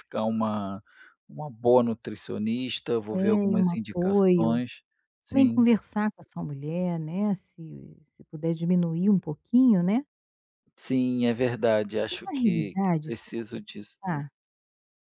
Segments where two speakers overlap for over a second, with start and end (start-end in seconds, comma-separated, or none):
3.1-4.6, 12.1-13.6